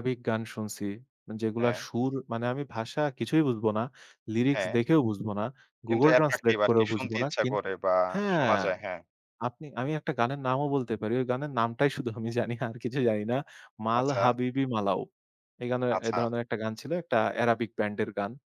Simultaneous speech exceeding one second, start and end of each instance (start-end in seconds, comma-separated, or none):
5.9-7.5